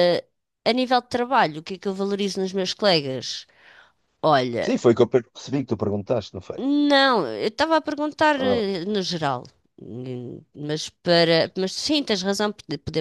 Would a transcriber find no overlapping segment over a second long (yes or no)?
yes